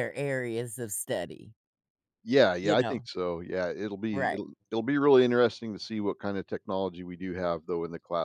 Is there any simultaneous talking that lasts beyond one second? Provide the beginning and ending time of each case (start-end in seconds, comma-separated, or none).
none